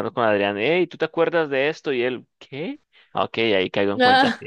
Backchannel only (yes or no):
yes